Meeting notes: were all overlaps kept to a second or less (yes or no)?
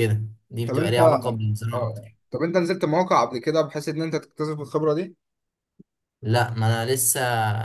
no